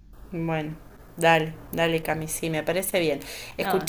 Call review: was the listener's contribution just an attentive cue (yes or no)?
yes